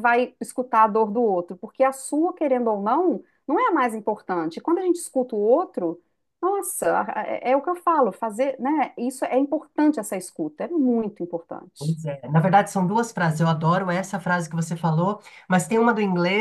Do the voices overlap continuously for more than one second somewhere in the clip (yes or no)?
no